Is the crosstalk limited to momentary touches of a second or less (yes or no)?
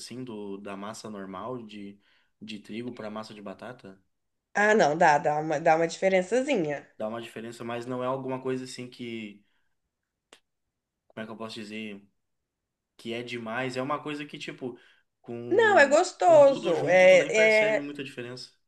no